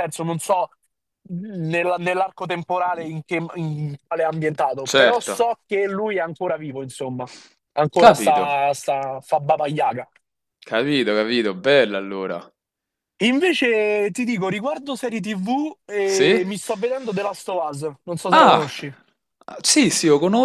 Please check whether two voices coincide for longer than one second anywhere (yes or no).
no